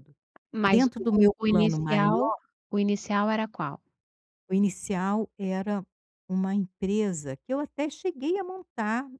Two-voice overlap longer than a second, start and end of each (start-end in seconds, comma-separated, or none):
0.6-2.2